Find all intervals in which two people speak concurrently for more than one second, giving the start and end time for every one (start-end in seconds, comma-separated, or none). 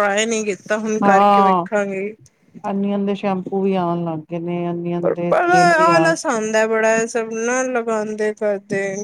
none